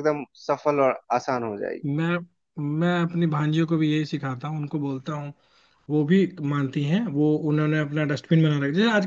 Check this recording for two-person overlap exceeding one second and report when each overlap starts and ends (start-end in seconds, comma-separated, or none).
none